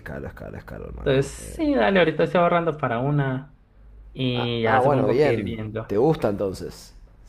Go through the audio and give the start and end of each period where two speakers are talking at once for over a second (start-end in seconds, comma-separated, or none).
4.3-5.9